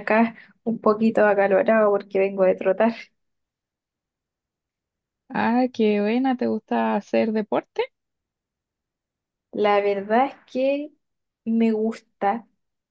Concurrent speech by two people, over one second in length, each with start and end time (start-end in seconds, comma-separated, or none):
none